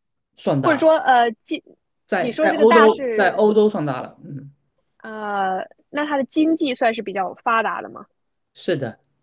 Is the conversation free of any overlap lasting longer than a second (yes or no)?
no